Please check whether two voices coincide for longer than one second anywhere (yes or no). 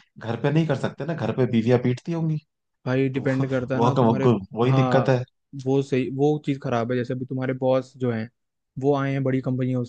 yes